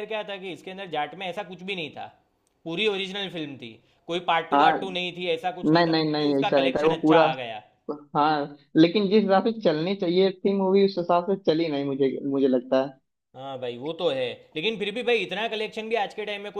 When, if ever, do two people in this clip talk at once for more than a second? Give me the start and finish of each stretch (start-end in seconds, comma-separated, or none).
5.7-7.2